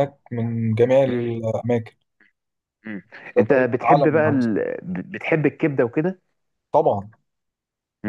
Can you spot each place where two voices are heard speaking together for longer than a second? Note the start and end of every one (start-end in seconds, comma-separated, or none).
3.4-4.6